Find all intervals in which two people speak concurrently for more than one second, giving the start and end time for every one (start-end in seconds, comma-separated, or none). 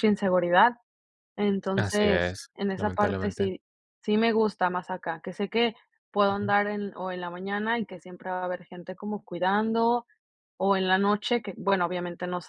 1.8-3.5